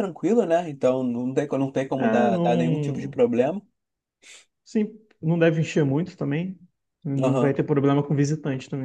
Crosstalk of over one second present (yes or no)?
yes